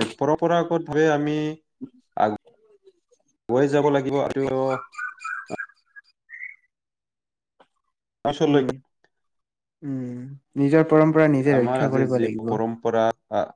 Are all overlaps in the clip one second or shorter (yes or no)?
yes